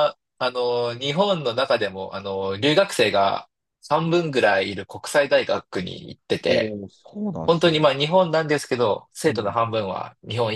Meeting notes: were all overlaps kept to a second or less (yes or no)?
yes